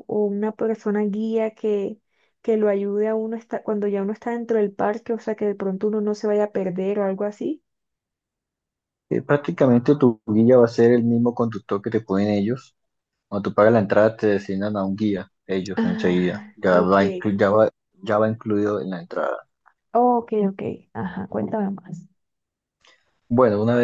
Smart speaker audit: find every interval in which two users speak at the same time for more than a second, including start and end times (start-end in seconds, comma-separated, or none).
15.8-17.3